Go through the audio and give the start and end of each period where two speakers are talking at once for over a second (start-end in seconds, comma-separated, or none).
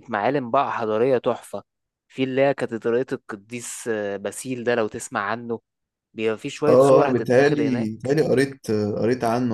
6.7-8.1